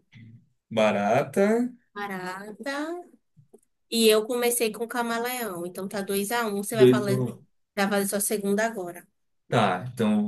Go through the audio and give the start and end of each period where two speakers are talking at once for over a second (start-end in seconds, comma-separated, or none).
none